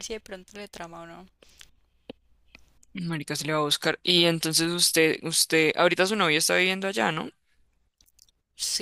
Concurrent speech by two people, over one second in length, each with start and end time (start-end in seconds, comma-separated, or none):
none